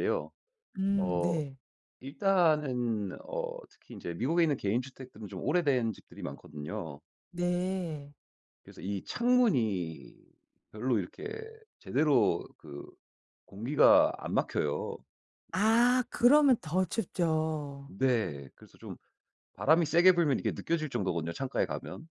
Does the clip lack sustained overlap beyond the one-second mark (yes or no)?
yes